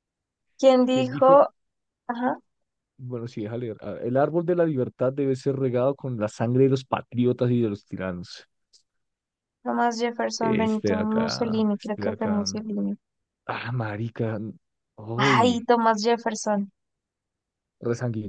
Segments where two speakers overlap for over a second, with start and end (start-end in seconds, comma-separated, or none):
10.4-12.5